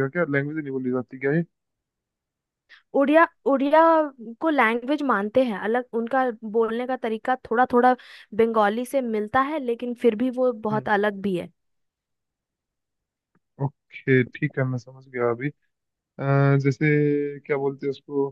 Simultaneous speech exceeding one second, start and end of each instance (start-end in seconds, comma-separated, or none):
none